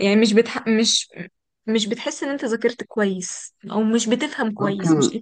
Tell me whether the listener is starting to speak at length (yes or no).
yes